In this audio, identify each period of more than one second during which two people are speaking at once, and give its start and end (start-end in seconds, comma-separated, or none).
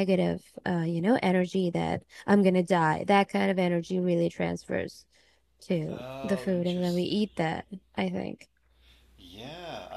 5.9-7.2